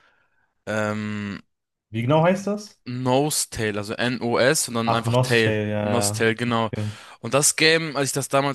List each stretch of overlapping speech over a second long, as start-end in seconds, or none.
4.8-6.7